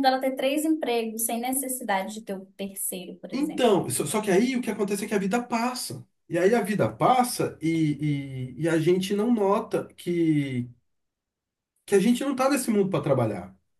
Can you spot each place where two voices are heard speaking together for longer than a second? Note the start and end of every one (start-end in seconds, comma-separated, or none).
none